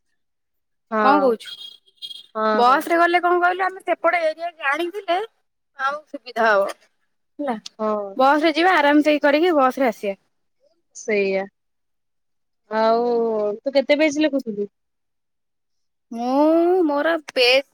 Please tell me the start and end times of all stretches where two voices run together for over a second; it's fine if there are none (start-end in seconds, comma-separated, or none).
none